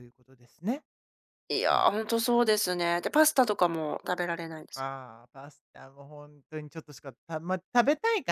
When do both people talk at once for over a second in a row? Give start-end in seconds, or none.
none